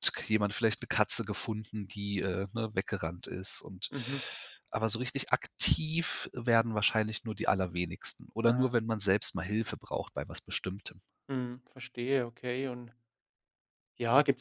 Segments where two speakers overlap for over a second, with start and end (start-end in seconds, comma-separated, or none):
none